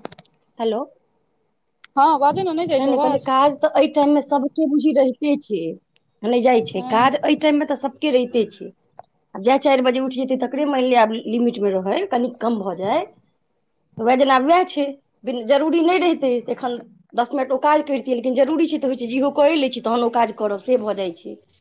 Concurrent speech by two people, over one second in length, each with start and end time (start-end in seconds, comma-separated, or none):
none